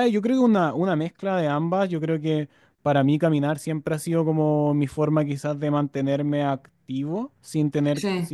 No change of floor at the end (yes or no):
yes